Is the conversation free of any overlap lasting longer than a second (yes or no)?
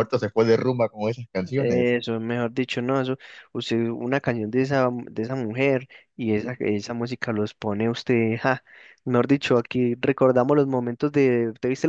yes